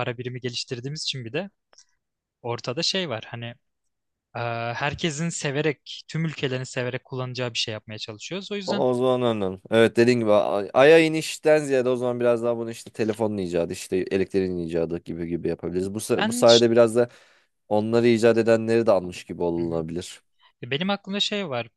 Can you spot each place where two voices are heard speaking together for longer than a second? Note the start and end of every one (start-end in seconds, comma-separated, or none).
none